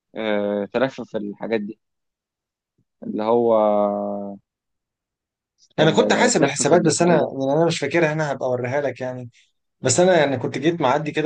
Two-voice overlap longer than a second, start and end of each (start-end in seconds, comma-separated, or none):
5.8-7.3